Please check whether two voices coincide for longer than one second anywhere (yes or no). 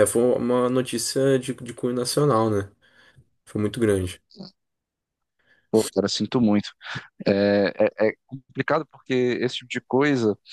no